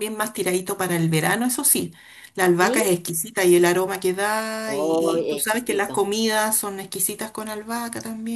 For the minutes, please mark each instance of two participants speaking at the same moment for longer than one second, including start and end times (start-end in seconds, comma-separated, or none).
4.7-6.0